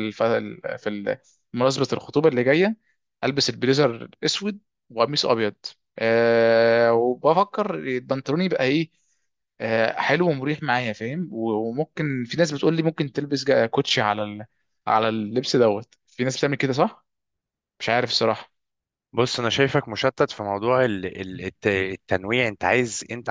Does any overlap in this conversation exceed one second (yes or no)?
no